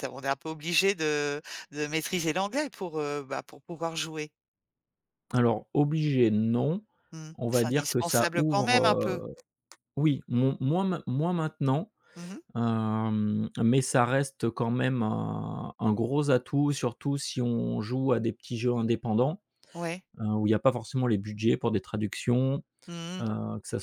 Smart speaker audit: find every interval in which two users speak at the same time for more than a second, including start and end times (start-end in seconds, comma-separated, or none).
7.3-9.2